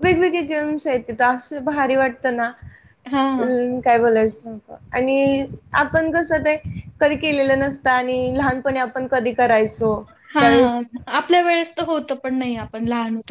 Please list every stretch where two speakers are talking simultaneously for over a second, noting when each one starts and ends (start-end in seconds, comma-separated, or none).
none